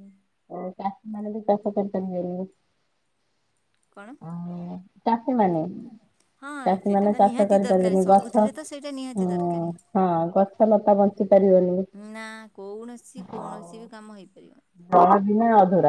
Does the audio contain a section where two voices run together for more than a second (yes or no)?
yes